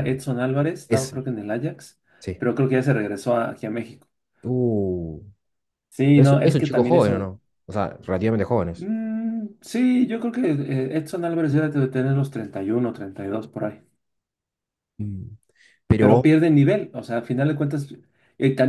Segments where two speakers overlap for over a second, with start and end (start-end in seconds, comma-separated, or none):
6.1-7.3